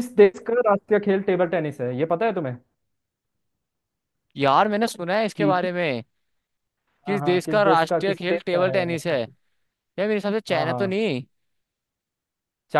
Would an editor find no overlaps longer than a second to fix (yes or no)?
no